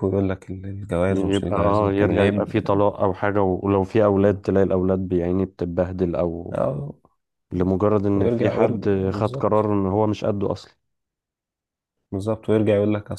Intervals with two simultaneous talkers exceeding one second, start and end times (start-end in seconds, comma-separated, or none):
1.1-2.5, 8.1-9.6